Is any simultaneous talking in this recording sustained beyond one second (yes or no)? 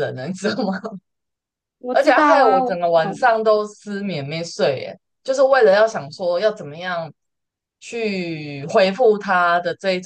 yes